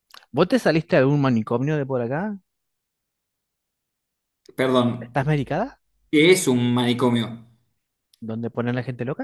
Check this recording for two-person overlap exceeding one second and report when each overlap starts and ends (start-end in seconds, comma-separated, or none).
none